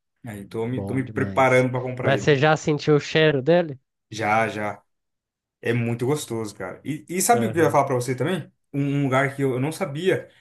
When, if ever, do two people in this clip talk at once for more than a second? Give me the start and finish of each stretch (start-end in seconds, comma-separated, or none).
0.7-2.4